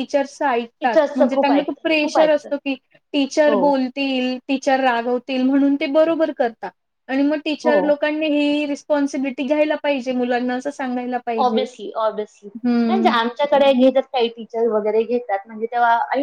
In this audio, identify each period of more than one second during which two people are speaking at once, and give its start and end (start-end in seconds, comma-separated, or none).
0.8-2.5